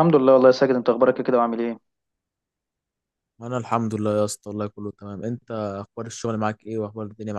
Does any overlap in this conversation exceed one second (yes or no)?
no